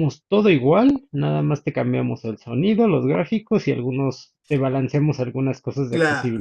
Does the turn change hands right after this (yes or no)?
yes